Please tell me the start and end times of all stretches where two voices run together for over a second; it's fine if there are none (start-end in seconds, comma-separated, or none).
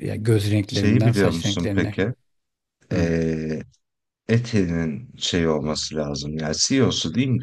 0.6-2.0